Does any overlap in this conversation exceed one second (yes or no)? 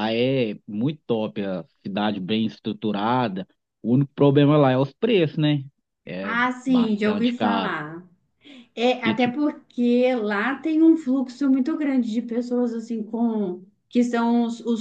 yes